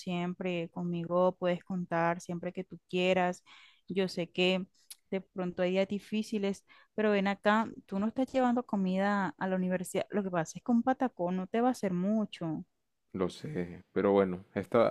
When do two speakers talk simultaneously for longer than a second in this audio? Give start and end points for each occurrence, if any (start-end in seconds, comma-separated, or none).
none